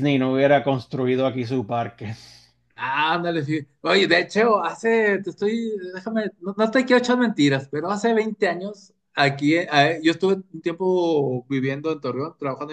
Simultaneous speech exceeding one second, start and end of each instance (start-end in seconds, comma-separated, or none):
none